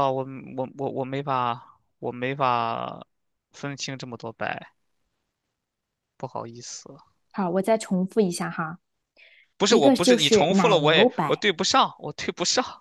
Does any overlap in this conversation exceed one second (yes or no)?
yes